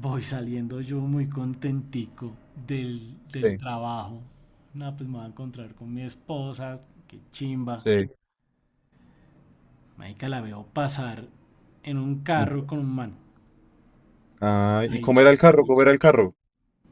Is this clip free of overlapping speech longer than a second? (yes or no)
yes